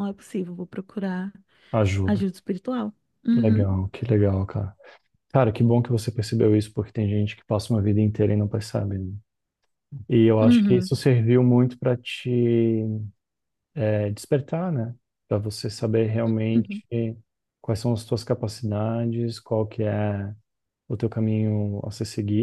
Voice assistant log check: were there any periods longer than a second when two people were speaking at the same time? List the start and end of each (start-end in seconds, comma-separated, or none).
none